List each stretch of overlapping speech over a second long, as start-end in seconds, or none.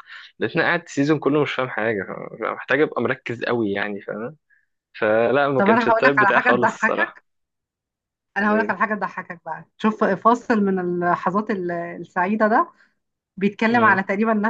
5.6-7.2